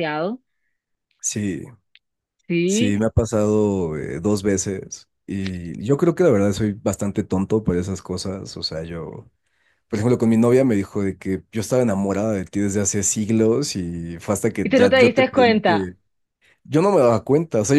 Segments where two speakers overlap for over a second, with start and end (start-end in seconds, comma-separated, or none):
14.6-15.9